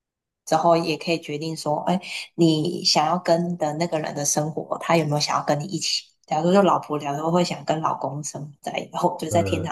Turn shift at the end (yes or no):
no